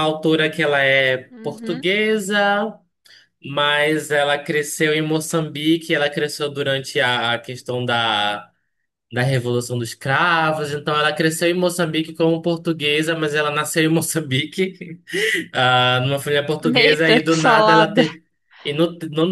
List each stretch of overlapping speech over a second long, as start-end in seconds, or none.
16.8-18.0